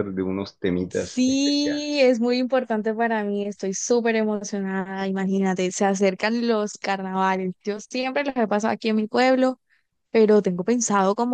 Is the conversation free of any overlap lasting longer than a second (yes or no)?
no